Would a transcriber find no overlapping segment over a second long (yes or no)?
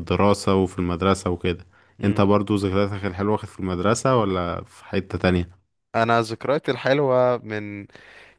yes